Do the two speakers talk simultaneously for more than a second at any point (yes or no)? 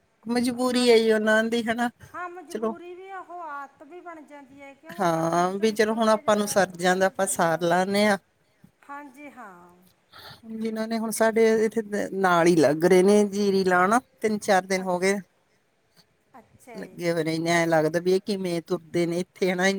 yes